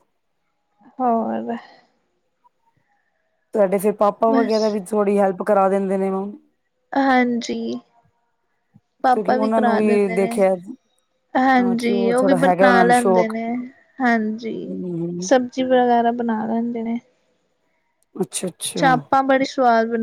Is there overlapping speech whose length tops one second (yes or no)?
yes